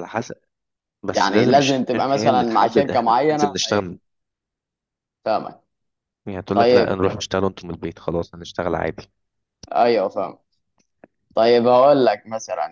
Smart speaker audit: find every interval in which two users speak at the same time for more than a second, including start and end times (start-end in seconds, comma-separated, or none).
1.1-3.9